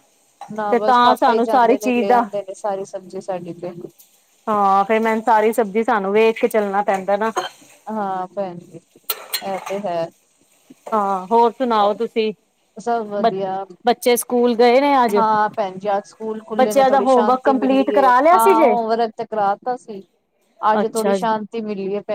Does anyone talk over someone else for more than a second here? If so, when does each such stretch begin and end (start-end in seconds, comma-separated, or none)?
16.6-18.7